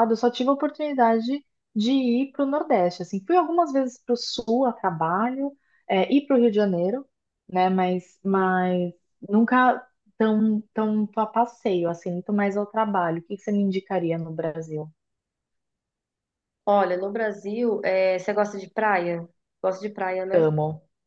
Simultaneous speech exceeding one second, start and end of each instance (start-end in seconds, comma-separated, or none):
none